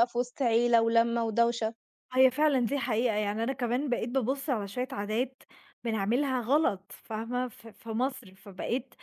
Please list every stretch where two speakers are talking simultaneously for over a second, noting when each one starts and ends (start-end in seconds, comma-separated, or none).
none